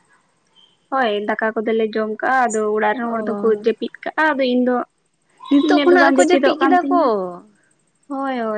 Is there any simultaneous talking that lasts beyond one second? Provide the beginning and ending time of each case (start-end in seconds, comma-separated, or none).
5.5-7.0